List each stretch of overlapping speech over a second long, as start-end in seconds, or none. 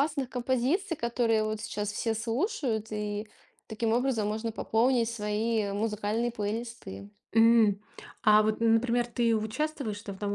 none